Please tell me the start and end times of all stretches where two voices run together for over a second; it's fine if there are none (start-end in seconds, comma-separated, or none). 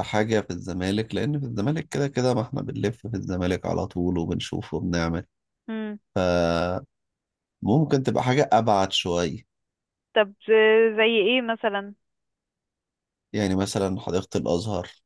none